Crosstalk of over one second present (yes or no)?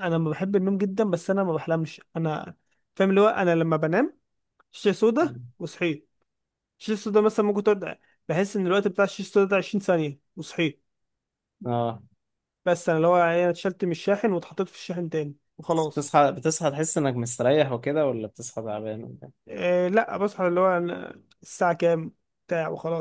no